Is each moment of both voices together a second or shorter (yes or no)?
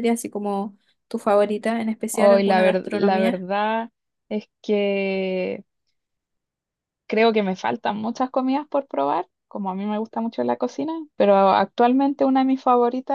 no